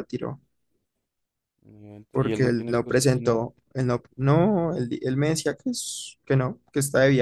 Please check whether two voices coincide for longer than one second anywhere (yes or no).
yes